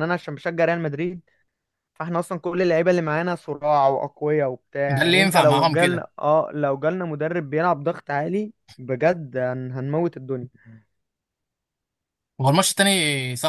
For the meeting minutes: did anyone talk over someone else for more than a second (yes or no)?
yes